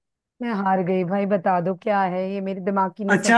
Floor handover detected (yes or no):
yes